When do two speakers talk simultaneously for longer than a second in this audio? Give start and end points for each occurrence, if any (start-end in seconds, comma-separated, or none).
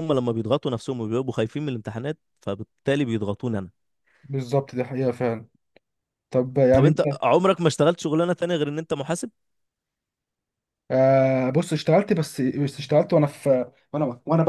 none